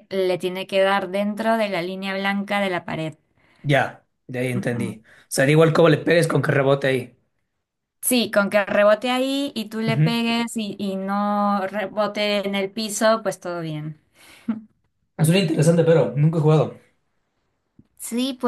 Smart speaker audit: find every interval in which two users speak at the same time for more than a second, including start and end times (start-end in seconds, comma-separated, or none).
none